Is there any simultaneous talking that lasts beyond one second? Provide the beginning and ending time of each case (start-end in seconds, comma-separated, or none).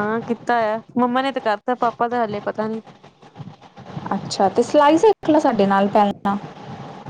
none